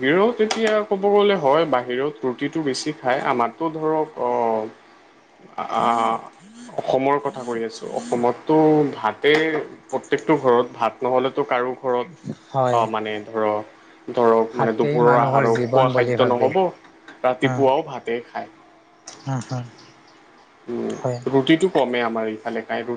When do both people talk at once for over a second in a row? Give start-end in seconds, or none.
14.5-16.5